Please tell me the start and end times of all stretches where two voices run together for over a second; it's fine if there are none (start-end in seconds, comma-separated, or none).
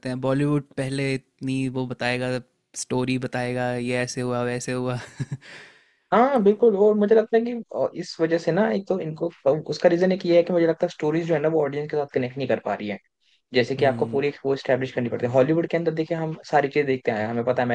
none